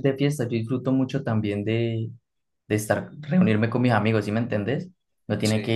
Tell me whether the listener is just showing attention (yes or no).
yes